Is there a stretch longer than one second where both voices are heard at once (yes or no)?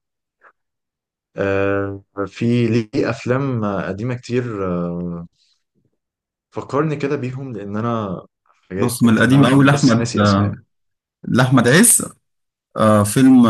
yes